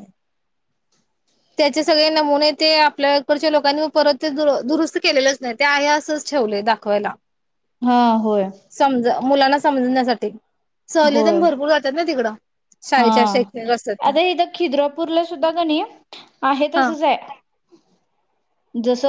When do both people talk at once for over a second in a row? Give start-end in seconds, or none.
none